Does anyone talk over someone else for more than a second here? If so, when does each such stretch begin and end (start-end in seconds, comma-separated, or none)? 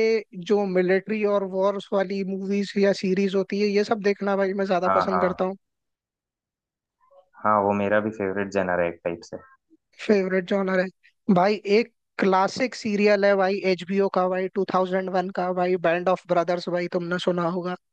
none